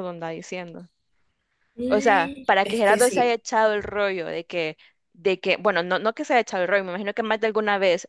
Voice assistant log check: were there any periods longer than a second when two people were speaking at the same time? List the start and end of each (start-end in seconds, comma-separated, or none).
1.9-3.4